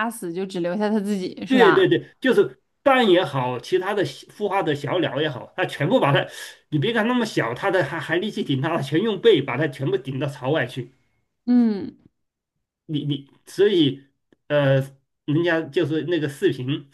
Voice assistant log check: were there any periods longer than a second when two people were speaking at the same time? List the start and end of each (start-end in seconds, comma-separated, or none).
none